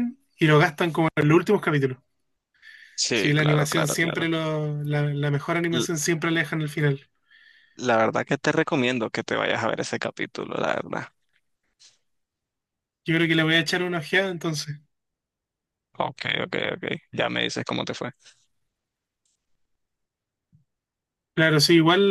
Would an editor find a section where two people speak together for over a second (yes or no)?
yes